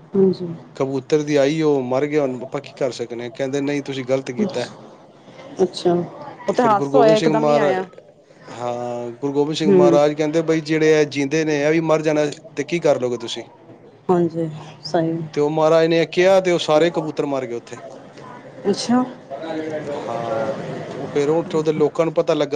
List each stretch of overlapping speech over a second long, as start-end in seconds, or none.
6.5-7.8